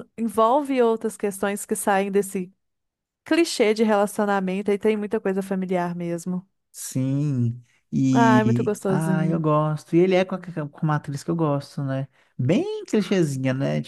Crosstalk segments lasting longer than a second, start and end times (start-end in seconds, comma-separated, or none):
8.1-9.4